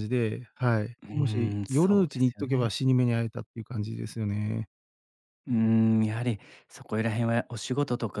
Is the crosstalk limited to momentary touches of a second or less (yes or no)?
no